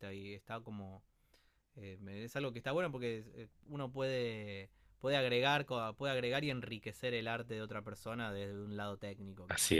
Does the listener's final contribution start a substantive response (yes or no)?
yes